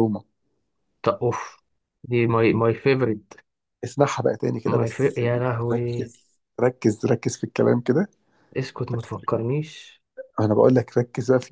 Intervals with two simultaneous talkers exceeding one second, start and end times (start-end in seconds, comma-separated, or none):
4.7-6.1